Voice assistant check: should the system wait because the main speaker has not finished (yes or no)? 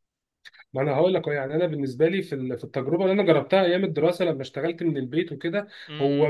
yes